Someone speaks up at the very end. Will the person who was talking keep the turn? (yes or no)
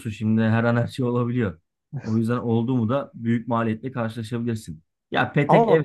yes